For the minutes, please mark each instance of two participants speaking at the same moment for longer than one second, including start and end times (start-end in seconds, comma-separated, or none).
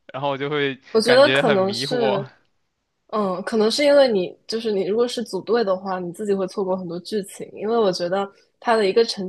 0.9-2.2